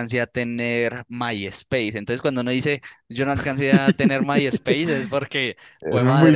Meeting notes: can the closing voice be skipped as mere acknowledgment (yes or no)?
yes